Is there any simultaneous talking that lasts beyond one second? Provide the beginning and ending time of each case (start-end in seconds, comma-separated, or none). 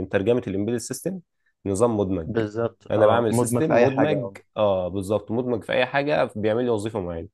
2.9-4.4